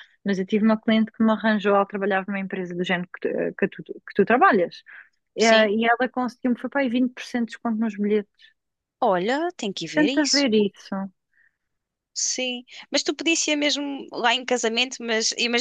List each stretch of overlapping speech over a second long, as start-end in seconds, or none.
none